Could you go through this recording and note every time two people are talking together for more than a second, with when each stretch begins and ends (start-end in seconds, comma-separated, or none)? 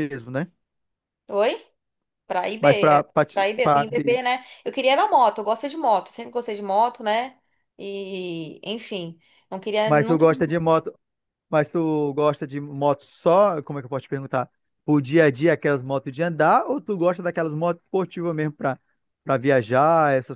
2.6-4.2